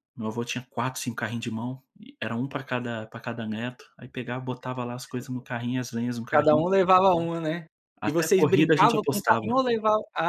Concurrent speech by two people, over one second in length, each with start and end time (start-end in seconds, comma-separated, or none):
8.0-9.5